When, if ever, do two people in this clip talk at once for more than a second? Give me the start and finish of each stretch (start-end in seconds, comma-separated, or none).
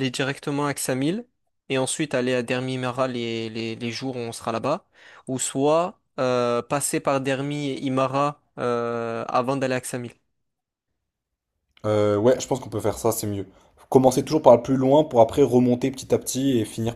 none